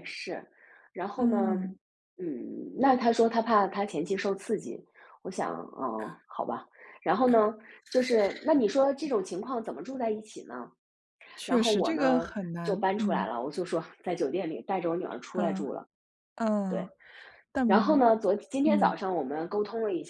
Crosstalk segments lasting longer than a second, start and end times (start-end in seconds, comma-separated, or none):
11.4-13.3